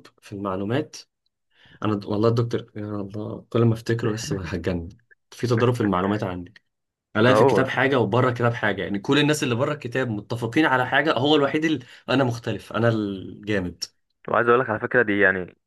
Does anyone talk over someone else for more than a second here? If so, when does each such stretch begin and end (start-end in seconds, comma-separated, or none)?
none